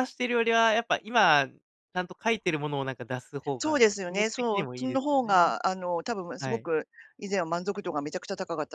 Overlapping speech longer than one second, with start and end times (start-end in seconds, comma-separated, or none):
3.6-5.5